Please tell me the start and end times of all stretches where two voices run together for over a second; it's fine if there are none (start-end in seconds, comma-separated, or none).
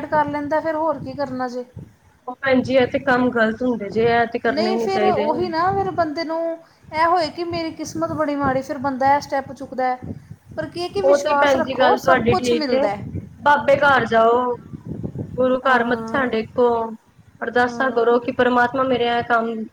11.0-12.9